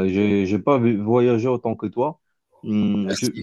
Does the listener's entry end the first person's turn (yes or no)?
no